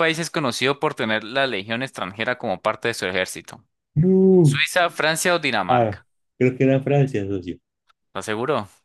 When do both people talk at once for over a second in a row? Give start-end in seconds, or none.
none